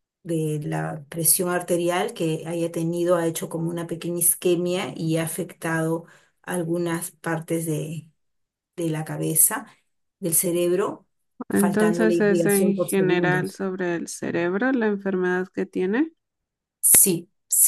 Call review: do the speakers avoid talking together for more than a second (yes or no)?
no